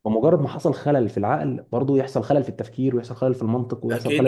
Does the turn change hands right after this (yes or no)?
yes